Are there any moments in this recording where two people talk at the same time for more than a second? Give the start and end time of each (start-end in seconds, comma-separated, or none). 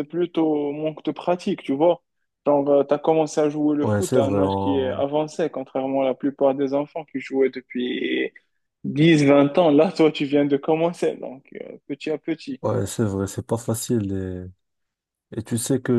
3.8-5.0